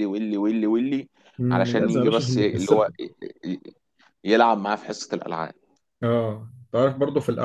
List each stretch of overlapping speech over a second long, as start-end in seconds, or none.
1.5-2.9